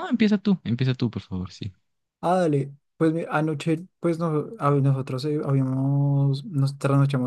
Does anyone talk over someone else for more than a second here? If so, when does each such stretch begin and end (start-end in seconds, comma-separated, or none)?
none